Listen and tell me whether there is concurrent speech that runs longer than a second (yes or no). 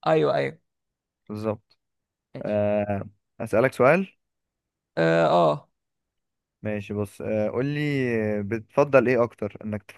no